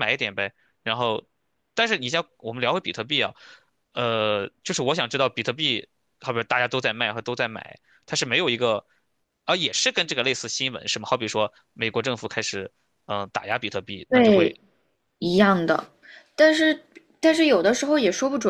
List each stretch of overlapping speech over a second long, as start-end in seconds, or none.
none